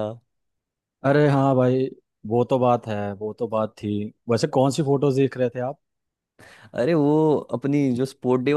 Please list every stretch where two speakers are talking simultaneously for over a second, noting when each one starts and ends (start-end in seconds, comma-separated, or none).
none